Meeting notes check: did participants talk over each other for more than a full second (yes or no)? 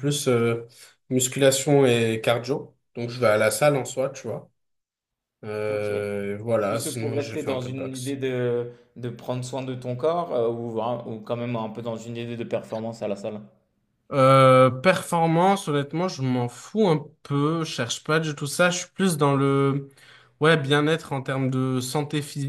yes